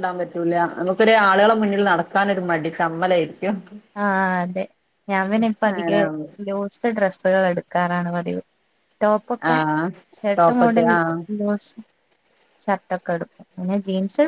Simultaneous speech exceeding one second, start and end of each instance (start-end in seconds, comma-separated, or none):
none